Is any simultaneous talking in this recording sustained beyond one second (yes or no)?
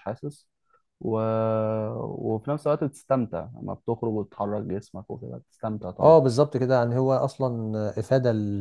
no